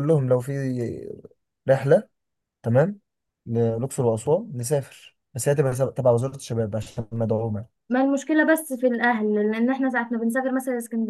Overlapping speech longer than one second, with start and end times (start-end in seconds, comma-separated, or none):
none